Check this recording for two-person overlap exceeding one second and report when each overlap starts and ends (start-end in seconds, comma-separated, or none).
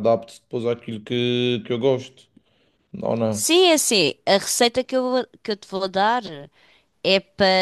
none